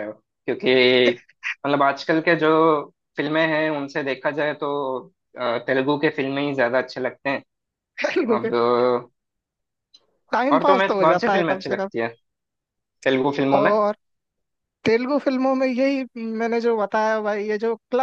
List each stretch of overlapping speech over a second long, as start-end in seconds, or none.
10.5-11.9